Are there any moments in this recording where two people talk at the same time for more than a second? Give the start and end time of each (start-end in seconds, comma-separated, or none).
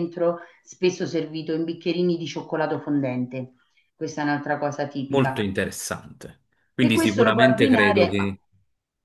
6.8-8.3